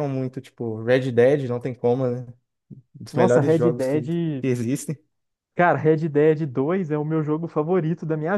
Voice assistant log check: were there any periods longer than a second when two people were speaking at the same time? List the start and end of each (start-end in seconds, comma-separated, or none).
3.1-4.5